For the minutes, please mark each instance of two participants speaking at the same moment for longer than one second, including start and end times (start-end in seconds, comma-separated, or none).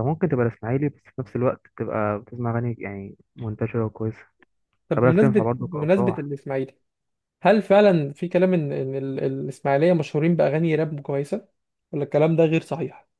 4.9-6.3